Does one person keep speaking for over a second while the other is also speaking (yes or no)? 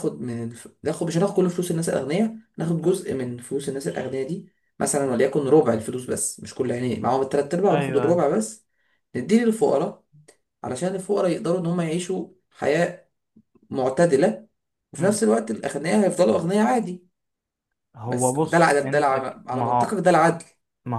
yes